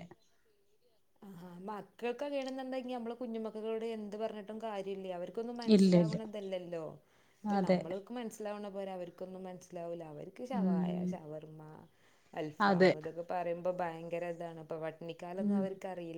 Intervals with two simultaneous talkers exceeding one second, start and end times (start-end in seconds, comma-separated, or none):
none